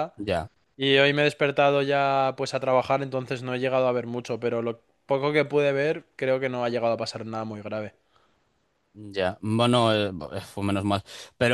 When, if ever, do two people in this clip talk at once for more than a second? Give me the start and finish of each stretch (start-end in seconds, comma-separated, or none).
none